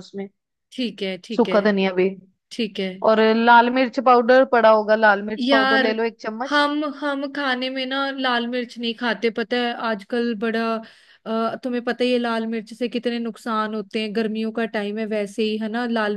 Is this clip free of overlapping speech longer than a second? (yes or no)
yes